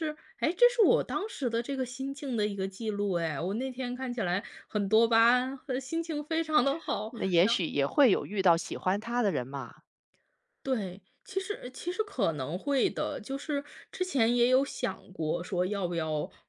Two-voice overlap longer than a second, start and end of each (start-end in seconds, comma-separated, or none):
none